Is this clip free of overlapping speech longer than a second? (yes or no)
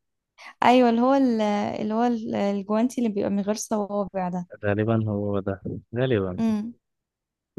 yes